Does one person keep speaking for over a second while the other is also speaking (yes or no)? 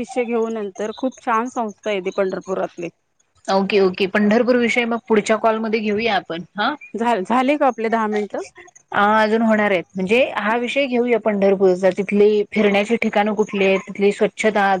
no